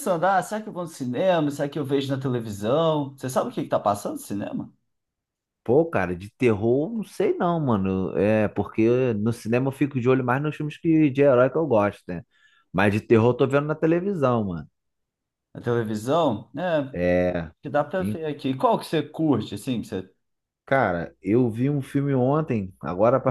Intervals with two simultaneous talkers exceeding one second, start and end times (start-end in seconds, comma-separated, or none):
none